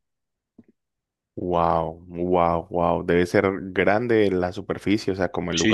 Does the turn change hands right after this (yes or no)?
yes